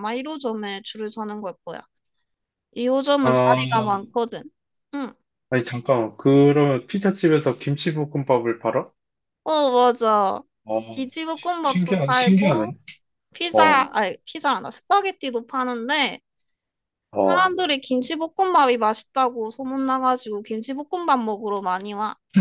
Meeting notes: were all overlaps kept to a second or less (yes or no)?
no